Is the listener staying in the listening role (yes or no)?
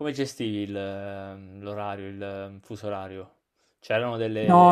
no